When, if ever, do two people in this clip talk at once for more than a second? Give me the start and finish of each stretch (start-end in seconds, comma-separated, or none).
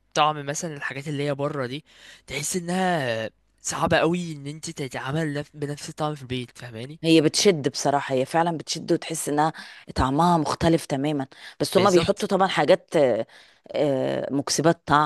none